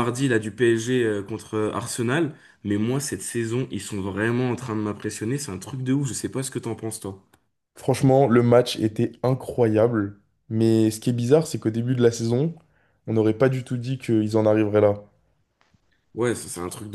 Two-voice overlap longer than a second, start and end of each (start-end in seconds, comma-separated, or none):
none